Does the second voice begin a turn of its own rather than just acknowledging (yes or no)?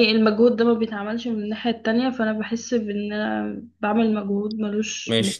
yes